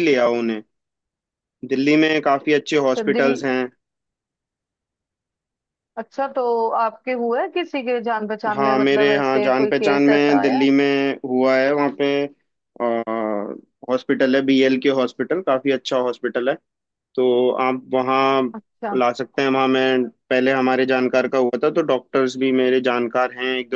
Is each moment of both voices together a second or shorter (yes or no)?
no